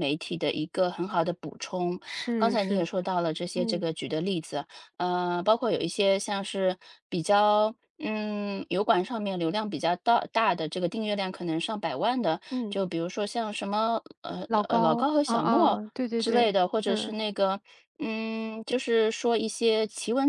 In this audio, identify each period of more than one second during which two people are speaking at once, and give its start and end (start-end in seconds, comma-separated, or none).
14.5-17.1